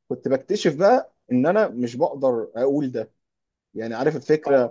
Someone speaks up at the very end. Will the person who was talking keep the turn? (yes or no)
yes